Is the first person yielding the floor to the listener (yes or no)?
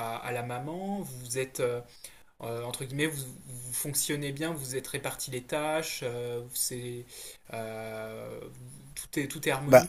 no